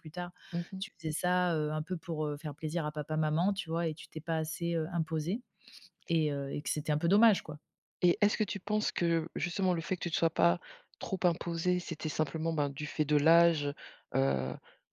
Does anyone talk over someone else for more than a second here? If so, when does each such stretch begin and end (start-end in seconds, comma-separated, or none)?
none